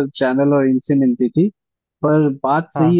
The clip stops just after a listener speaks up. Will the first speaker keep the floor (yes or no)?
yes